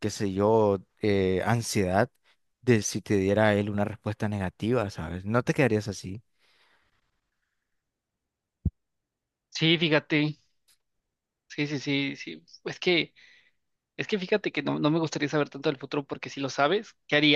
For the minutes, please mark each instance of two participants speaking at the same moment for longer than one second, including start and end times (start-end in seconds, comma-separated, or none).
none